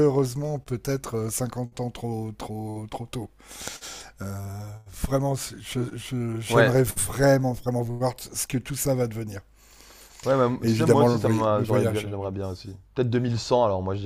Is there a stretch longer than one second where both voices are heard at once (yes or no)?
yes